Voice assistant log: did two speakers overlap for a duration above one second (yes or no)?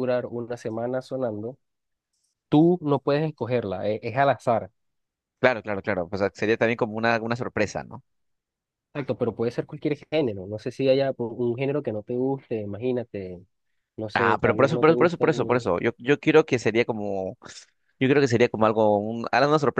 yes